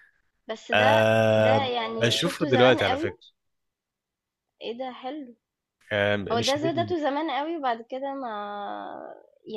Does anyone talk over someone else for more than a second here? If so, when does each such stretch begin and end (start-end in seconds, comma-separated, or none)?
0.7-3.2